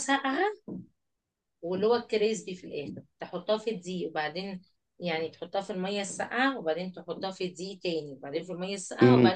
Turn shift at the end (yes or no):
yes